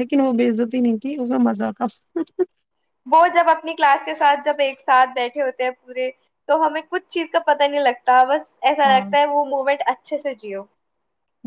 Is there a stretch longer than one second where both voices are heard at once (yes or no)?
no